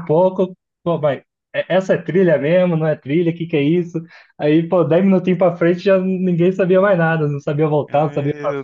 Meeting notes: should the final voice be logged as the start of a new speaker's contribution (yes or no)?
yes